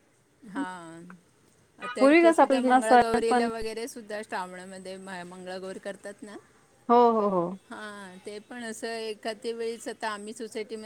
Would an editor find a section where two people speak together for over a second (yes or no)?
yes